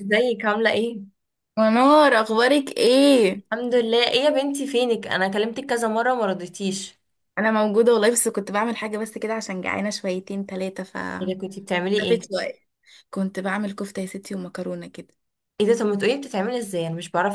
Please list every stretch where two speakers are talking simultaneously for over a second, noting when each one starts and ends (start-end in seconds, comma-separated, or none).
none